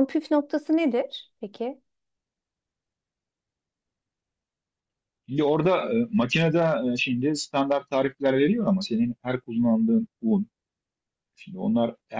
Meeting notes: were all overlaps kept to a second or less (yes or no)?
yes